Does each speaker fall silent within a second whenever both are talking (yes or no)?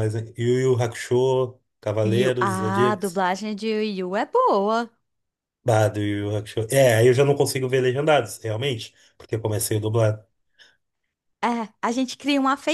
no